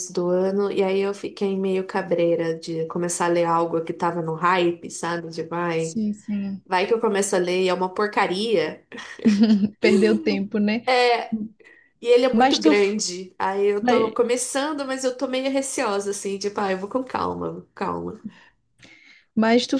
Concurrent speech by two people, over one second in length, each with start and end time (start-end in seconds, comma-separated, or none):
none